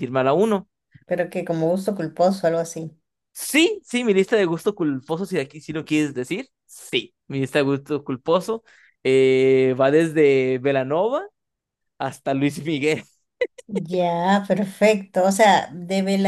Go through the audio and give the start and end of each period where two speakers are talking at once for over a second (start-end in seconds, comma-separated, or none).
none